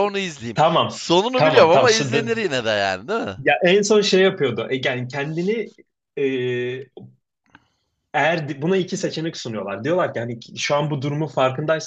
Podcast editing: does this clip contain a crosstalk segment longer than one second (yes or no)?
yes